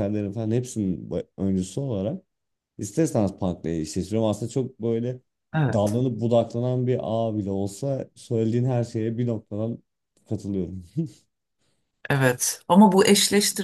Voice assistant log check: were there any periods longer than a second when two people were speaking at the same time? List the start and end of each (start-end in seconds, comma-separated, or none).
none